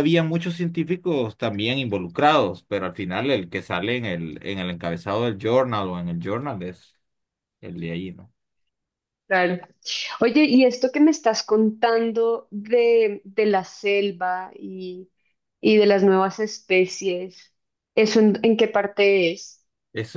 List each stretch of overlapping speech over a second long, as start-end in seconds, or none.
none